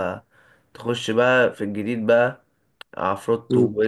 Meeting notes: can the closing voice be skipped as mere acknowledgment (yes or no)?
yes